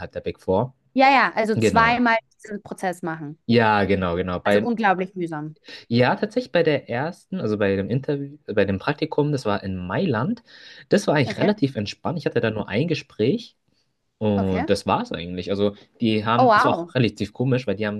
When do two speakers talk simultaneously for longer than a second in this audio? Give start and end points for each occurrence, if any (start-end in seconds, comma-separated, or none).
none